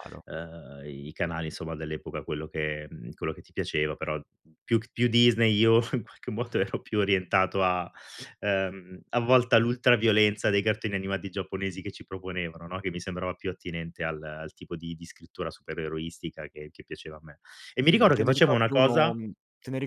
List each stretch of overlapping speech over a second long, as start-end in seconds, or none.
17.9-19.1